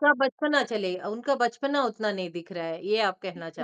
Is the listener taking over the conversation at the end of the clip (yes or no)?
yes